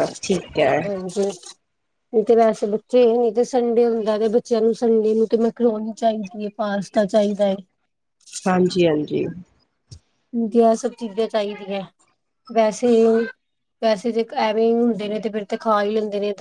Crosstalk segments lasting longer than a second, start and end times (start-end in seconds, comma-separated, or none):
none